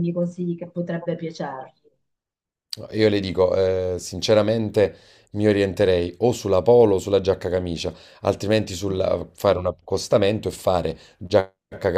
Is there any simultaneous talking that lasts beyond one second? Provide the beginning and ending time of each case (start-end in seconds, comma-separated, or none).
none